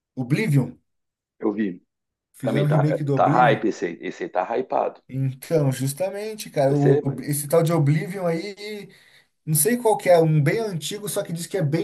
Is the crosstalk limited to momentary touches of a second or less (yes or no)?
no